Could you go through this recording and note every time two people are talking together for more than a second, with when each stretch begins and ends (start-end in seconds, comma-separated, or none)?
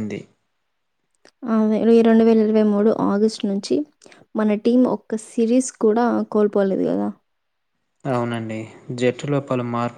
none